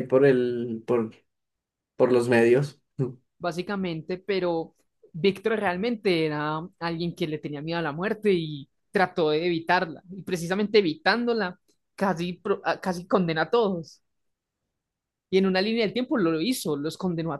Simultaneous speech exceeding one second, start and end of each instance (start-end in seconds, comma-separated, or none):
none